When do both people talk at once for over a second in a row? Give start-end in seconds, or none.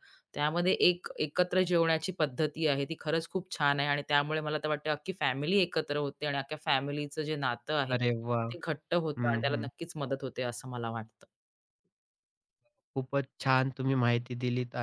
none